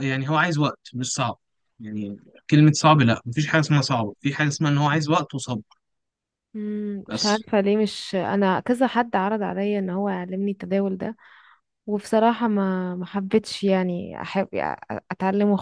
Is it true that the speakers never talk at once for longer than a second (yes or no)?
yes